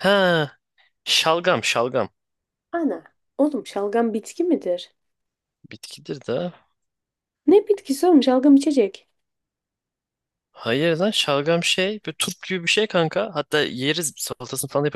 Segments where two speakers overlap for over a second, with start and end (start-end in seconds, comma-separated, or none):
none